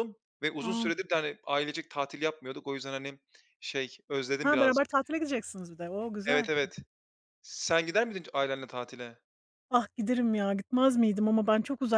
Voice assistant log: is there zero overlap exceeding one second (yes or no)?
yes